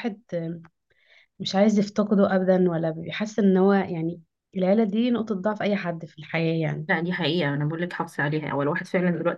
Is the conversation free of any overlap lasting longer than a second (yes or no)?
yes